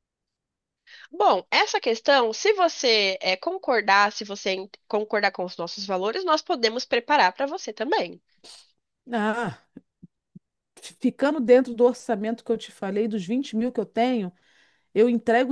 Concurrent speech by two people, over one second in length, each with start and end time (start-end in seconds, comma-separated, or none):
none